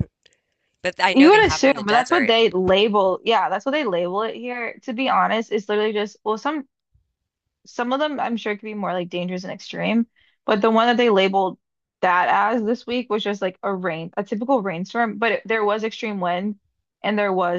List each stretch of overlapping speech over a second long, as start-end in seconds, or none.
1.1-2.4